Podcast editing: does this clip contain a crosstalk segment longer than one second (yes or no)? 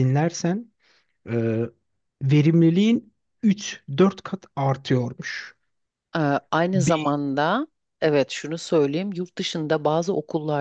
no